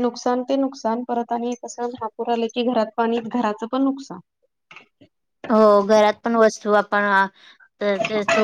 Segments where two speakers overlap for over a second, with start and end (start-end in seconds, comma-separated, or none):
none